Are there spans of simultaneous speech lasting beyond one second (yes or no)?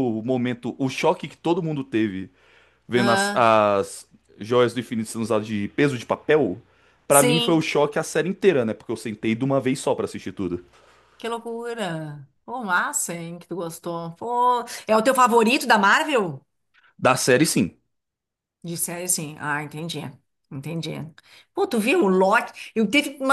no